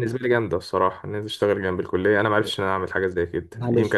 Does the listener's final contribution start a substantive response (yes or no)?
no